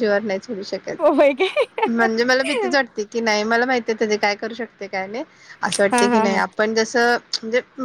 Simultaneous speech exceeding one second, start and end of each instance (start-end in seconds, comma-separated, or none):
none